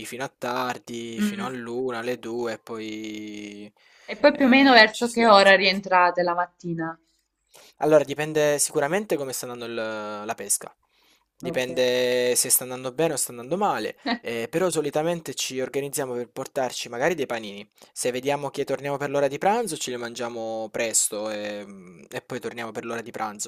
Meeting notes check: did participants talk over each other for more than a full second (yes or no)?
yes